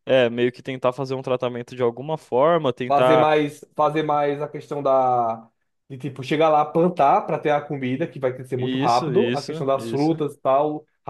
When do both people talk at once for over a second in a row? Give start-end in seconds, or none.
8.6-10.2